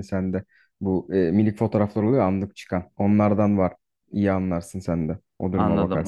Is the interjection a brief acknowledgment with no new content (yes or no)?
no